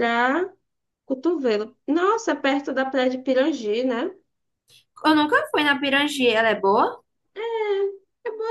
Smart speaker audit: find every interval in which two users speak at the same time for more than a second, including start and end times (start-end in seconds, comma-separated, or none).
none